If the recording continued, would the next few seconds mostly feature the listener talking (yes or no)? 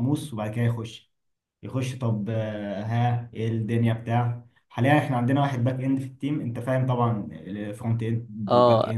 yes